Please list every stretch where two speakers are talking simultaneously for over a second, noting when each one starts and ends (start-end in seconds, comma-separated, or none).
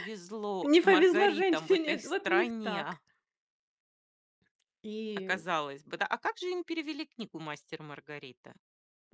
0.6-3.0